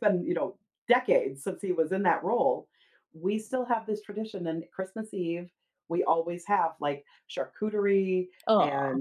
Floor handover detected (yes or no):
no